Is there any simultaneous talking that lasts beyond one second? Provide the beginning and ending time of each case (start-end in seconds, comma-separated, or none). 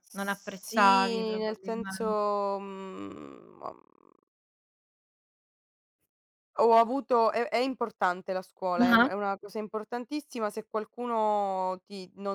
0.6-2.0